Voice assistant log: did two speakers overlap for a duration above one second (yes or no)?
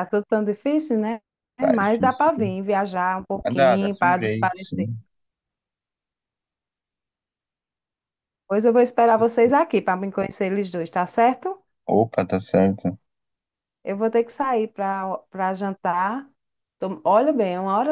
yes